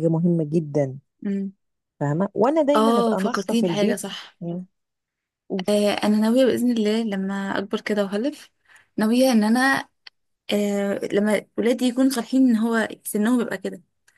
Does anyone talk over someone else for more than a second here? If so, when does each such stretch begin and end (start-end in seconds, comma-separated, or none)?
2.8-4.0